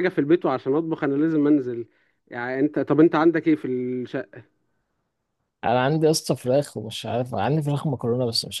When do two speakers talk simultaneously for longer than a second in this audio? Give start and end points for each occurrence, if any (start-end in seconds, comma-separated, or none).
none